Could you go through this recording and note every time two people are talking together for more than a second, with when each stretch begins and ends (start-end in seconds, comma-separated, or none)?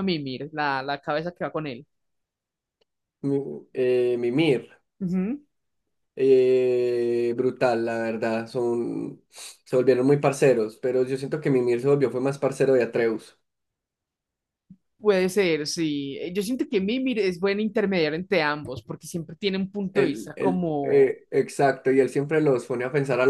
19.9-21.2